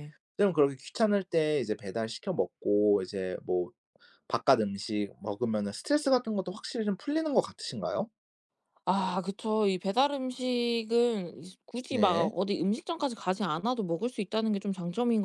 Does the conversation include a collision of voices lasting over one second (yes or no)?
no